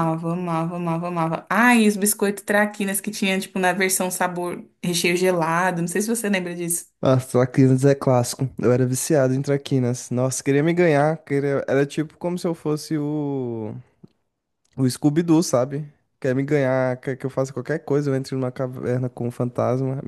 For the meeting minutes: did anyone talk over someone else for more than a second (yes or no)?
no